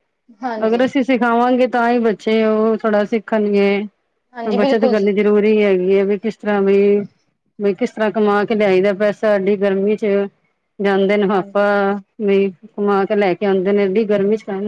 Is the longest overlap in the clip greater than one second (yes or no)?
no